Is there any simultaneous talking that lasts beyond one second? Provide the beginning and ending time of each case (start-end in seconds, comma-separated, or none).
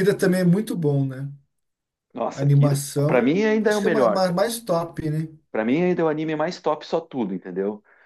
2.4-4.4